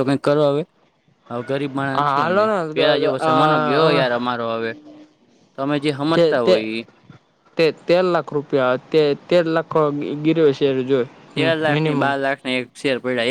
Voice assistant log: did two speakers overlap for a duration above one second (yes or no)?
yes